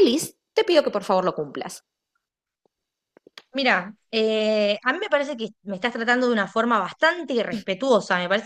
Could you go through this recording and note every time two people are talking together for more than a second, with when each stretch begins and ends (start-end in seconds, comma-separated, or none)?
none